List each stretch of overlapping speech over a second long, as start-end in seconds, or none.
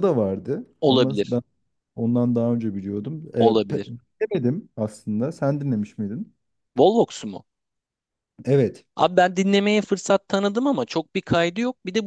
none